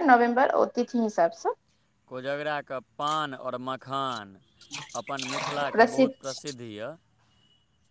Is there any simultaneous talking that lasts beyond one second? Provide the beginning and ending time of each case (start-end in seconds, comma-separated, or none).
none